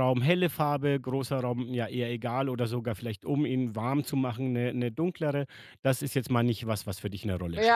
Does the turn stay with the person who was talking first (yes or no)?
no